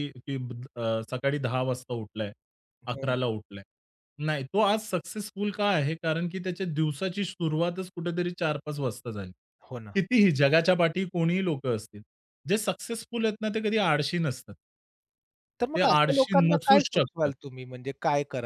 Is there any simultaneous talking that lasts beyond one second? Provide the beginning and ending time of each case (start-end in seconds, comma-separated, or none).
15.7-17.3